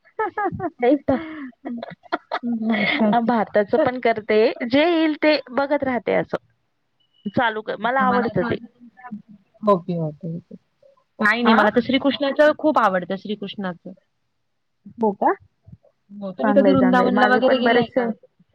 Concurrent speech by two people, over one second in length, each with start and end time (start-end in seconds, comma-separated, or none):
16.4-18.0